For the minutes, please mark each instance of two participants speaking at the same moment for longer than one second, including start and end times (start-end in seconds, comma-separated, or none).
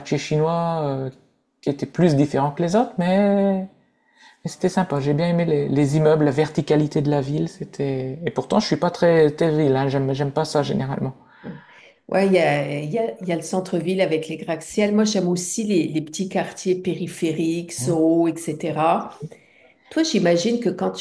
none